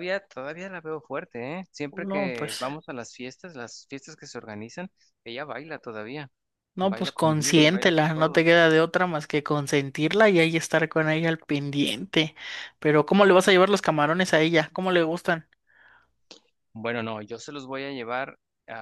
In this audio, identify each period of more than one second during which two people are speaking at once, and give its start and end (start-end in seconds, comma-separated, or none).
6.8-8.5